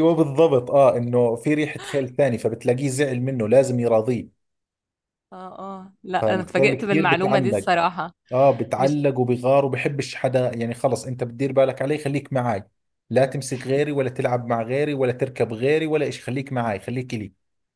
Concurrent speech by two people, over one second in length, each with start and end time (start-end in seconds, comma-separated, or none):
6.2-7.7